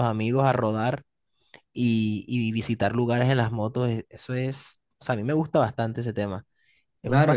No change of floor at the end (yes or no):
no